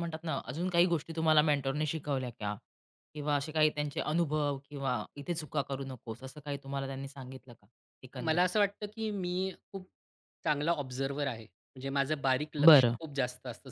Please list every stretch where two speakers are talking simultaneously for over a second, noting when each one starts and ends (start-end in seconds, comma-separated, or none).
none